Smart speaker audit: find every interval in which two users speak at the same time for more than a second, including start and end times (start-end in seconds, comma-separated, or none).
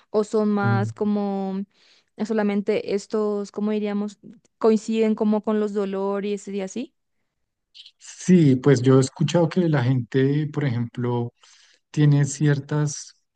none